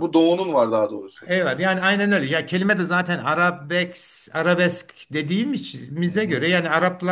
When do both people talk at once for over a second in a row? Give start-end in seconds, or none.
none